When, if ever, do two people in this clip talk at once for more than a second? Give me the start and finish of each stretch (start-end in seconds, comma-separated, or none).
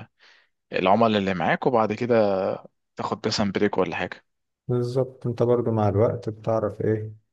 none